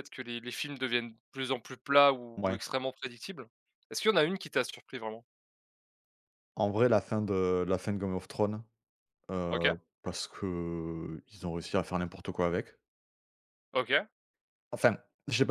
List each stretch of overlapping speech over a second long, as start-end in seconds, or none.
none